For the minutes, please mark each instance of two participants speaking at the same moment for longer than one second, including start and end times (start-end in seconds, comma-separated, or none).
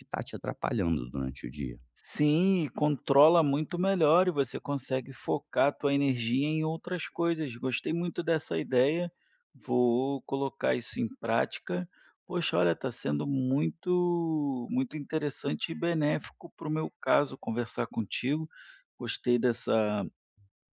none